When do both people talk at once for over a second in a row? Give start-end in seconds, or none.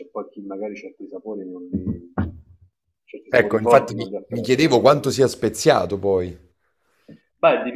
3.3-4.9